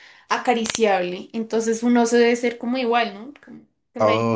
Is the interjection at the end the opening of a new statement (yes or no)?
yes